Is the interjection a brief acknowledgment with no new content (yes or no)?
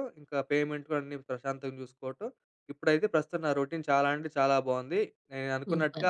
yes